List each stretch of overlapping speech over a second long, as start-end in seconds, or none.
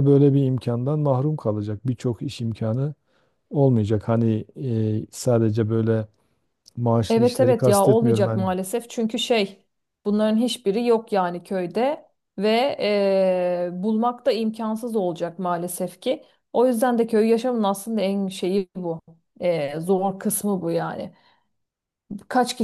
7.1-8.4